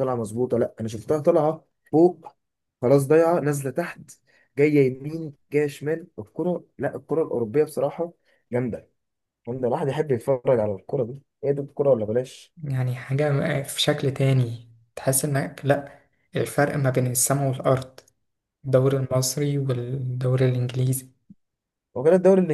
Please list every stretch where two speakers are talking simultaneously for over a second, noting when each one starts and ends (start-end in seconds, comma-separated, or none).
none